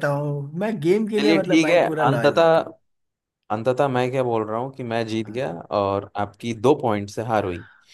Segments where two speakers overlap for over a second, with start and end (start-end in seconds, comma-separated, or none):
1.2-2.6